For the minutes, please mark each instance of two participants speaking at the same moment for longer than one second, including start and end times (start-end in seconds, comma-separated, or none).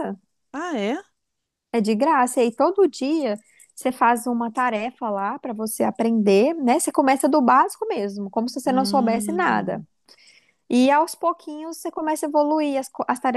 8.6-9.8